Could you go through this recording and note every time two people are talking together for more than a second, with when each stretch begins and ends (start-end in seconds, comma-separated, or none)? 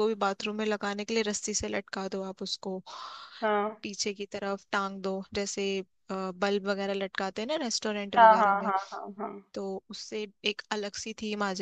none